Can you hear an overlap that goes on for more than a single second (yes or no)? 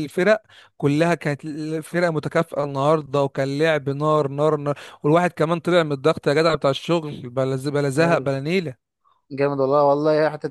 no